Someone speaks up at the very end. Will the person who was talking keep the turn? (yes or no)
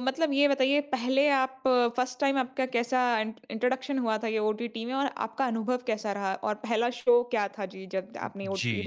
no